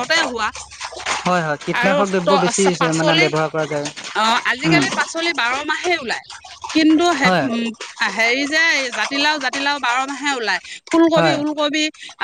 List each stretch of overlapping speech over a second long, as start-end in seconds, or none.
none